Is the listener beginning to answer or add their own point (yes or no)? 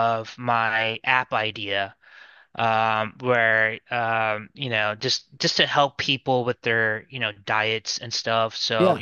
no